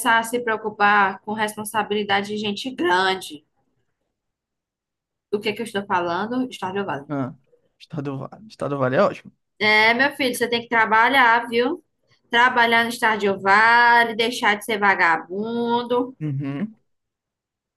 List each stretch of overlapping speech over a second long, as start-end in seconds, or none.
none